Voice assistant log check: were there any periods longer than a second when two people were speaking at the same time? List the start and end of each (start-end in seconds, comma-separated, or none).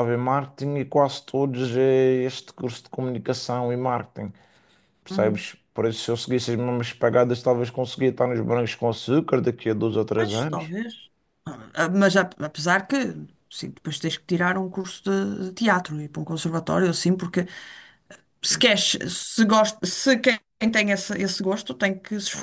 none